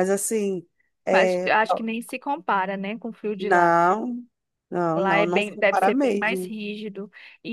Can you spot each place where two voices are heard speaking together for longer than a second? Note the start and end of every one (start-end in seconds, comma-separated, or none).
4.9-6.5